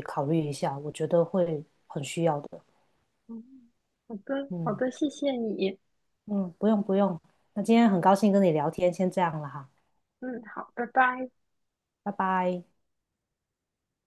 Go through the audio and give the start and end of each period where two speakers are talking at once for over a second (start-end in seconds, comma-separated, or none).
none